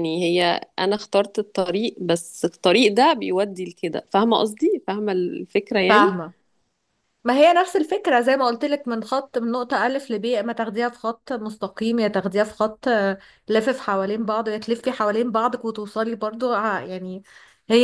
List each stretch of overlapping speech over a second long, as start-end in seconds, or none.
none